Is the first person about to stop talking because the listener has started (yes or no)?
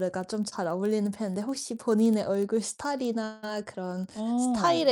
no